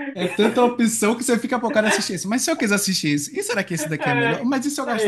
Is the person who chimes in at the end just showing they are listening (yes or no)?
no